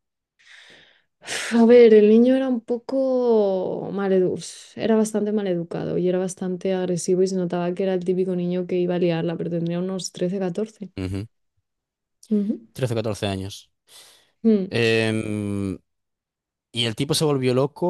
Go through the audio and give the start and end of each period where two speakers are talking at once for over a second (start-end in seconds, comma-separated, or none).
none